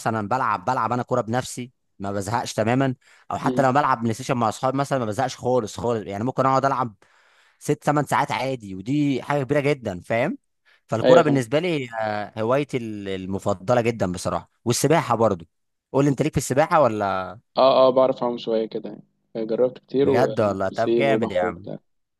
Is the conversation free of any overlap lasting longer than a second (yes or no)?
no